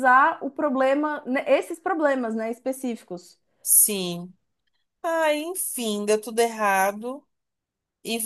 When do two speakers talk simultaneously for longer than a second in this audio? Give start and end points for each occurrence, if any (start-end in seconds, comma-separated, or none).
none